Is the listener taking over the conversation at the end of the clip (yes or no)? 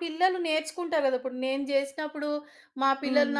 no